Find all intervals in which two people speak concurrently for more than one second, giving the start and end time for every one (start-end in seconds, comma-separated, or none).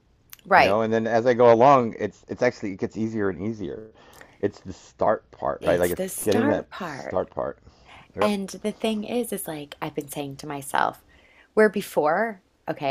5.6-7.2